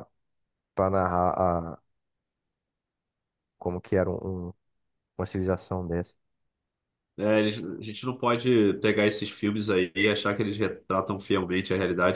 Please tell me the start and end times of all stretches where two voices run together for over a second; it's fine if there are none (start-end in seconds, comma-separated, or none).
none